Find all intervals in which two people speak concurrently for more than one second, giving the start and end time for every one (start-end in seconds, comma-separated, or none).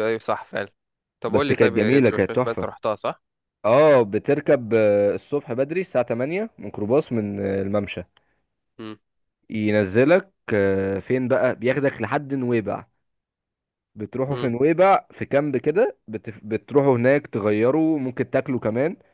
1.3-2.7